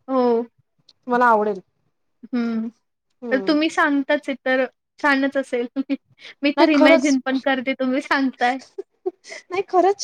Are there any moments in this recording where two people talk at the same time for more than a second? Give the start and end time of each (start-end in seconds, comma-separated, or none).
none